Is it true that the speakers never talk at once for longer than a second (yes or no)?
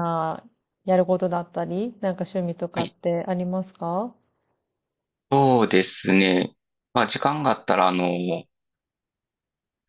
yes